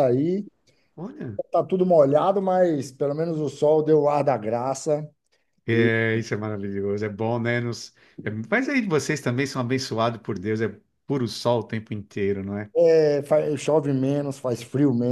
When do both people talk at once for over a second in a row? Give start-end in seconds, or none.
none